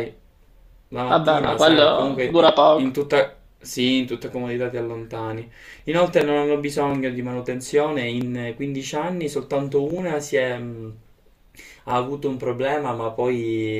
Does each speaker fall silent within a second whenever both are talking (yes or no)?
no